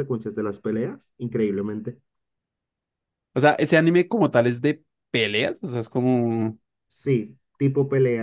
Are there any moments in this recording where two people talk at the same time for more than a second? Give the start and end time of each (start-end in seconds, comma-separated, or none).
none